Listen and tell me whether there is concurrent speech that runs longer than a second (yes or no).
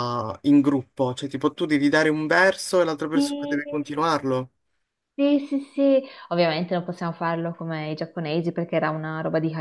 no